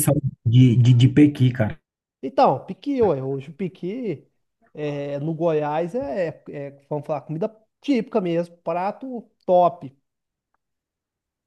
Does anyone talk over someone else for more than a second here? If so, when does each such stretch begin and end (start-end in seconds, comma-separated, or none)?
none